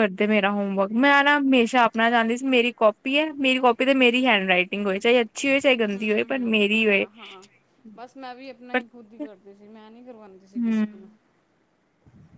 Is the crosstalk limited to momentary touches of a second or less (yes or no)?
yes